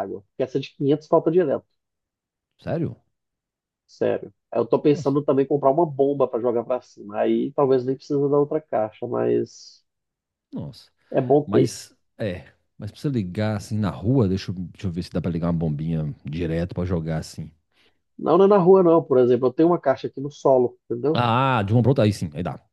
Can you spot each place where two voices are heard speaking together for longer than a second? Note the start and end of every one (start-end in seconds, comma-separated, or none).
none